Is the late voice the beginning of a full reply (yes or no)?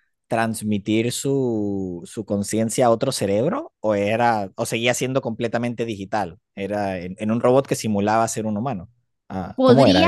yes